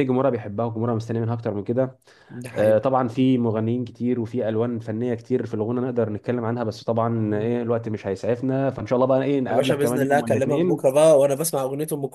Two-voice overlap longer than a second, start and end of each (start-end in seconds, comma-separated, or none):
9.5-10.8